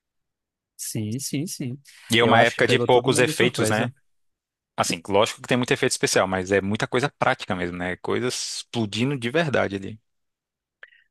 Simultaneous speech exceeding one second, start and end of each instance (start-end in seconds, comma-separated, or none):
2.2-3.9